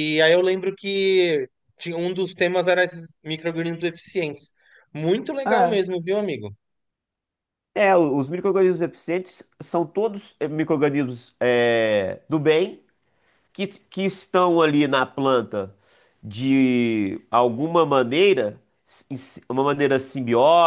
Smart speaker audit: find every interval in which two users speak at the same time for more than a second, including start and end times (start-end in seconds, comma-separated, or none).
none